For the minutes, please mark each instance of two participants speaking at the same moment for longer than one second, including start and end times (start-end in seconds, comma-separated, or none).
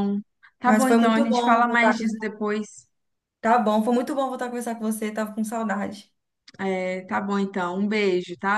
0.7-2.2